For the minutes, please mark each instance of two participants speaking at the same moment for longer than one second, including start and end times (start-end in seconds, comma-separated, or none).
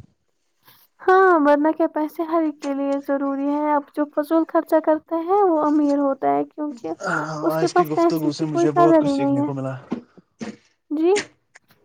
7.6-9.5